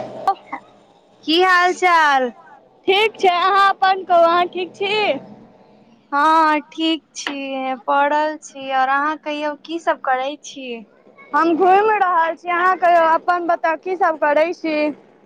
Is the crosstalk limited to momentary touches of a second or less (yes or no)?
yes